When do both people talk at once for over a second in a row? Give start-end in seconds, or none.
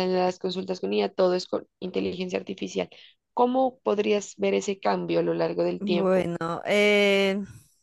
none